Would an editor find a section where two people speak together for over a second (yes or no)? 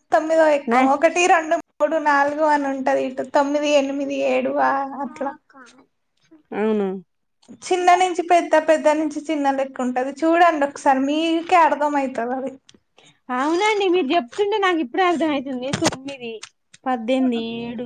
no